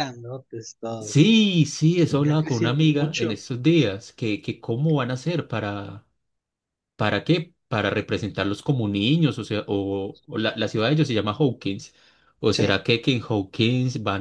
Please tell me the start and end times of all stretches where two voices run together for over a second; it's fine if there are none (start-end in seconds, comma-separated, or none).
2.1-3.4